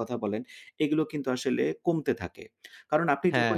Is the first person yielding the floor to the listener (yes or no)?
no